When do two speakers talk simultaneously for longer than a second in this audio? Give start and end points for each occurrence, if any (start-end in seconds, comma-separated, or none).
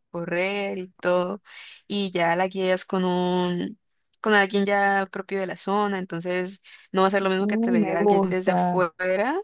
7.4-8.9